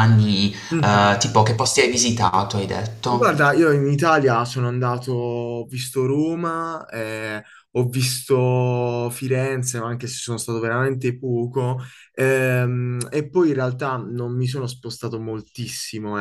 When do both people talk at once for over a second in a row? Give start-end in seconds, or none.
none